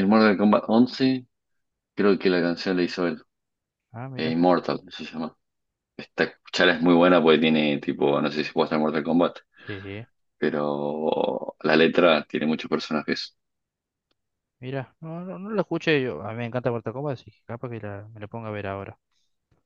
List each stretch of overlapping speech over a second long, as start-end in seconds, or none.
none